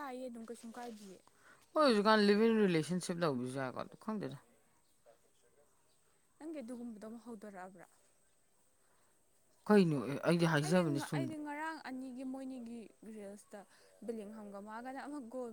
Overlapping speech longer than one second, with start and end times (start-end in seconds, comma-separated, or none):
none